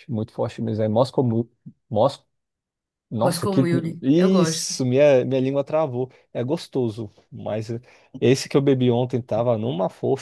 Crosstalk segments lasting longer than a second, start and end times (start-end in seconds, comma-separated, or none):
3.2-4.7